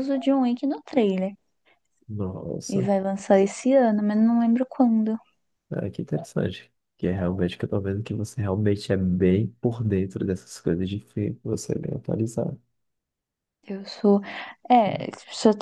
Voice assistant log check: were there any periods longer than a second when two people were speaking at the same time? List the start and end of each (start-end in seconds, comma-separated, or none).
none